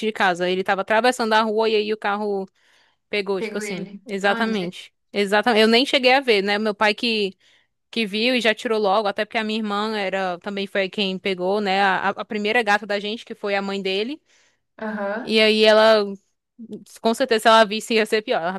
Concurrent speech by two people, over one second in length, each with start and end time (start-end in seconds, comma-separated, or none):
3.4-4.8